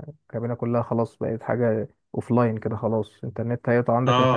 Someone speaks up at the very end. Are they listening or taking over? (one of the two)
listening